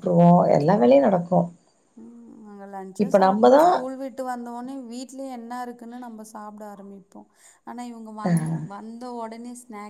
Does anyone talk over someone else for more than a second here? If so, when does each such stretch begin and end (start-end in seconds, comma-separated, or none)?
none